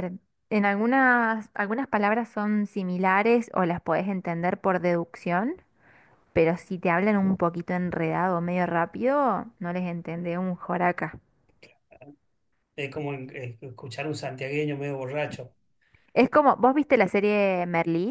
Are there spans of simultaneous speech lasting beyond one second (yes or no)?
no